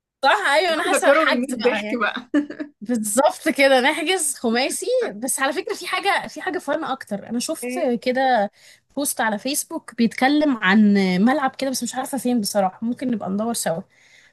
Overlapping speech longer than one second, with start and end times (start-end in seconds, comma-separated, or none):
0.8-2.0